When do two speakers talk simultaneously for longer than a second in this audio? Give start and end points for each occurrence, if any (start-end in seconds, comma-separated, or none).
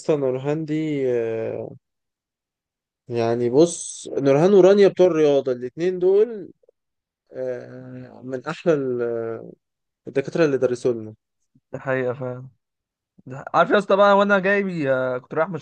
none